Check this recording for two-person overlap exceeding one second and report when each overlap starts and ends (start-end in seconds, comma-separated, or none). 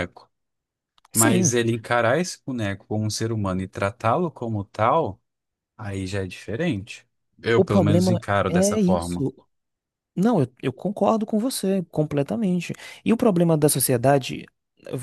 7.6-9.3